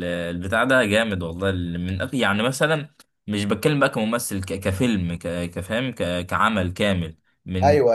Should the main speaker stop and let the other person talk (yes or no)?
no